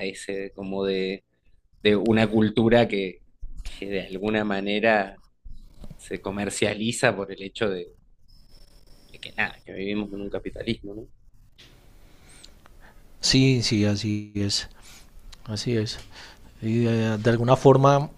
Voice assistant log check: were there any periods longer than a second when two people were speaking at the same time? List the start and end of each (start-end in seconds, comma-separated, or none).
none